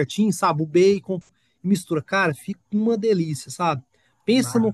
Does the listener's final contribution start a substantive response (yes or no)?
no